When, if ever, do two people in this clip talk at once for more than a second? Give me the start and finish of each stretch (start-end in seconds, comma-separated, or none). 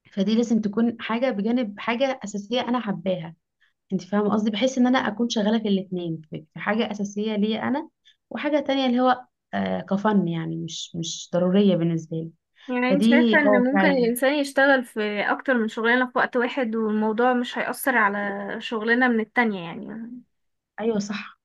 12.9-14.1